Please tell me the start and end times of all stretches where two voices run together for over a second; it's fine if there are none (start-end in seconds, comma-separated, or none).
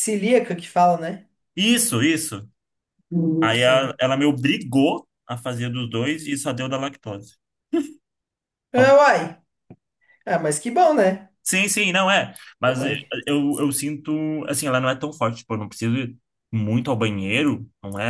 none